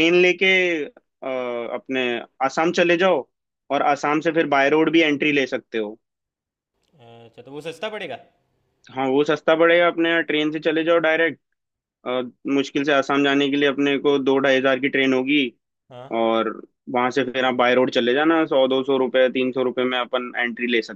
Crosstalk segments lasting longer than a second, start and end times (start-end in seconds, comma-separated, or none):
none